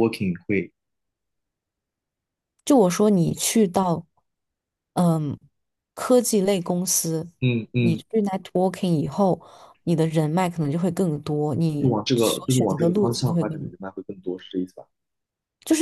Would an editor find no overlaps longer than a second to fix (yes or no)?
no